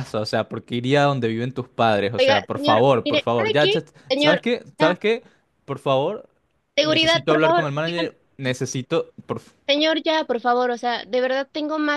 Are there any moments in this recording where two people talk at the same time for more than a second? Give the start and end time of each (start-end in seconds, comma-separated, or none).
2.2-5.0, 6.8-8.1